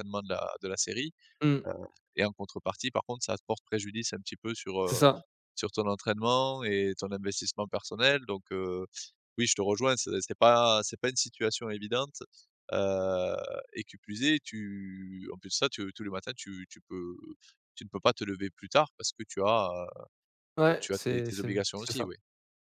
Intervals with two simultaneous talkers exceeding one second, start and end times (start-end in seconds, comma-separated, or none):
20.7-22.1